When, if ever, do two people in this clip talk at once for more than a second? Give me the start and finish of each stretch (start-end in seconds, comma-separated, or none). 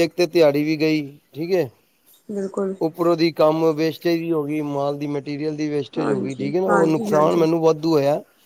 6.0-7.5